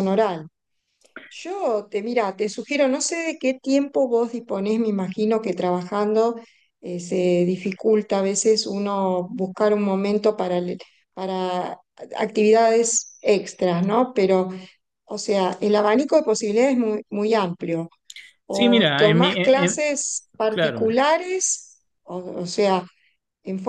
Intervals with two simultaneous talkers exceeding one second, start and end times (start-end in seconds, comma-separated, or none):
18.5-19.8